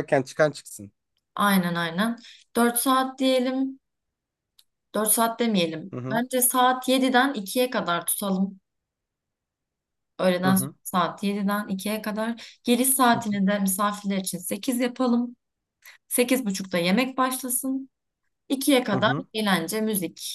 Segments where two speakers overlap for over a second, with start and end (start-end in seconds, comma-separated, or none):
none